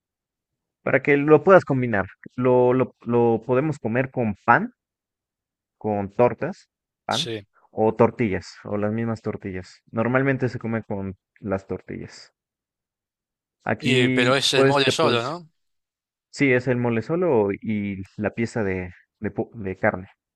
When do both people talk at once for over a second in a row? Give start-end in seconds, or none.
13.8-15.3